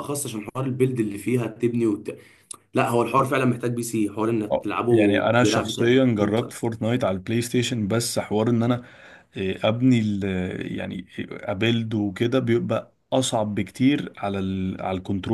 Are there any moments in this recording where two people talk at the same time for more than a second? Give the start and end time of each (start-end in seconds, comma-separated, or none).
4.5-6.5